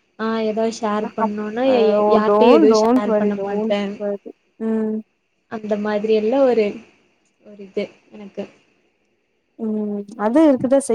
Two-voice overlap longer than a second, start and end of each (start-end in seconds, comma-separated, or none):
2.1-3.8